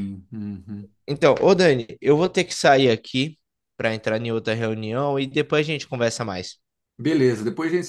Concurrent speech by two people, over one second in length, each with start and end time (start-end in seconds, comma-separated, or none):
none